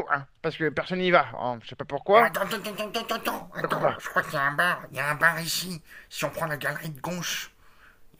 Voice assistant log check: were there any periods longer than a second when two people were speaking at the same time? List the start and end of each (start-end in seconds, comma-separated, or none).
none